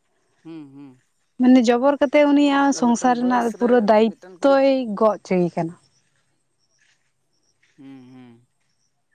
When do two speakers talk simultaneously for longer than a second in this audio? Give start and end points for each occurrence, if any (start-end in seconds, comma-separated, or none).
2.7-4.6